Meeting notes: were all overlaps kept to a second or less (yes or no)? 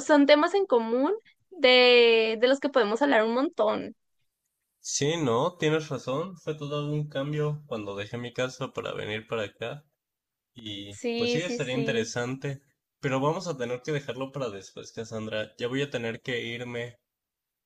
no